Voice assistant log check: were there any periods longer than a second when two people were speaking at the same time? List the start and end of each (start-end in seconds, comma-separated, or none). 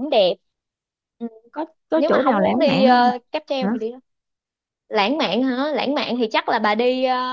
1.9-3.7